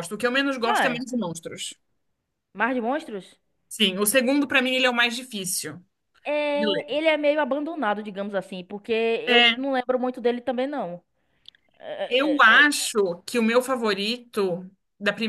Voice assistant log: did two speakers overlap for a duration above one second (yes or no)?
no